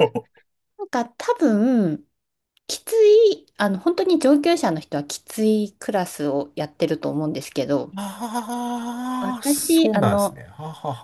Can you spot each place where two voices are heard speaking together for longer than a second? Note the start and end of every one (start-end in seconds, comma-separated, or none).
9.2-10.4